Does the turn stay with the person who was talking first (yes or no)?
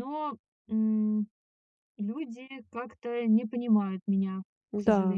no